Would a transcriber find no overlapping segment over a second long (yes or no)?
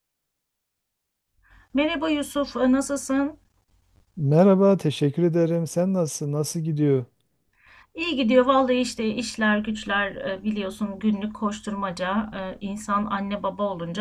yes